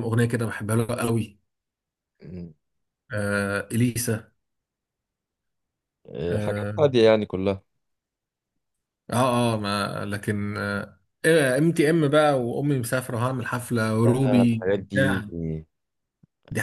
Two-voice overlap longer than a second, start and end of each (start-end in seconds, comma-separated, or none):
14.0-15.2